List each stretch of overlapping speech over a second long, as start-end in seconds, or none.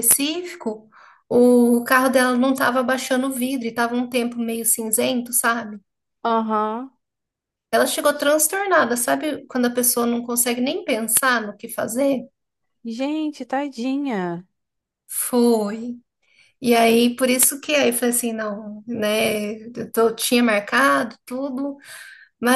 none